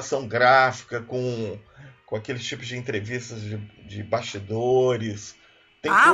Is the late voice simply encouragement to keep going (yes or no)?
no